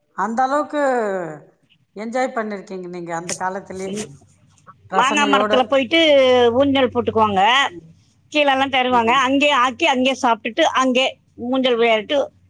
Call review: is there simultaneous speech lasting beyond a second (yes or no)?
no